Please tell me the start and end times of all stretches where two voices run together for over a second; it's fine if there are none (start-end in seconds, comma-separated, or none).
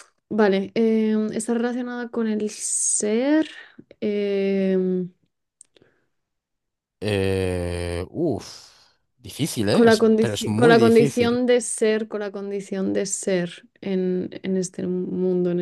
9.7-11.4